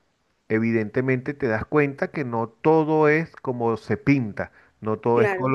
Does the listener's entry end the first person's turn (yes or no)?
no